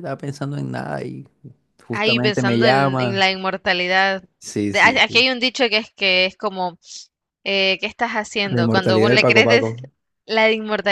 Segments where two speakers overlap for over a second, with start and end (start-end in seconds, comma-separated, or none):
1.9-3.2, 8.4-9.8